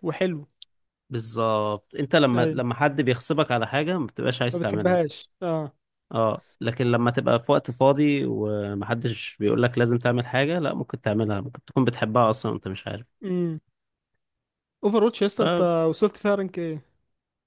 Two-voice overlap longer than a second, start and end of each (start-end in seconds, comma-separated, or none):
none